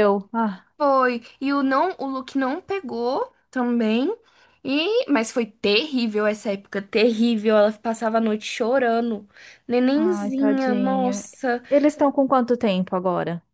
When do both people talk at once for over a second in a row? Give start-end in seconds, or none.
9.9-11.2